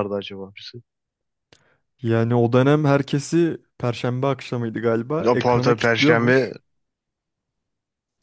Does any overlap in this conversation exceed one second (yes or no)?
yes